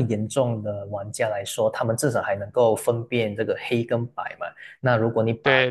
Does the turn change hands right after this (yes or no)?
no